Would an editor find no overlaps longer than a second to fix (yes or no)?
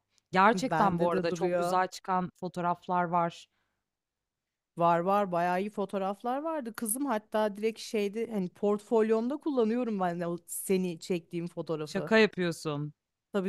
no